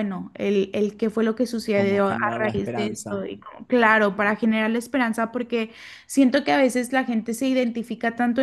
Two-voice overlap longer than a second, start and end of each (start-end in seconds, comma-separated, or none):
1.7-3.2